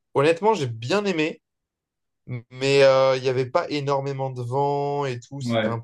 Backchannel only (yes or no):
yes